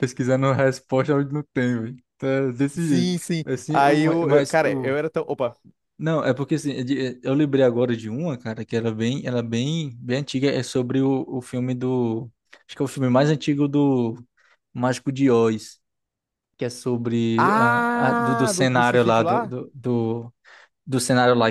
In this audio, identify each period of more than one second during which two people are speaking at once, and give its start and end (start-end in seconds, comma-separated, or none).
2.8-5.0, 17.4-19.6